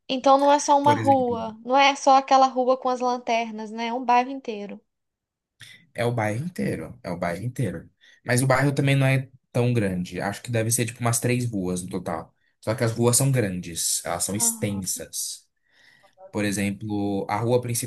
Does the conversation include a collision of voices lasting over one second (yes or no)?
no